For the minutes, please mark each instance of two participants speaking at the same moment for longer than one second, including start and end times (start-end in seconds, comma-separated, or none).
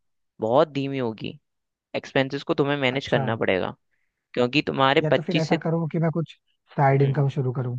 none